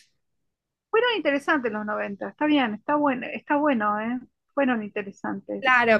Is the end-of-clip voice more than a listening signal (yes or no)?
yes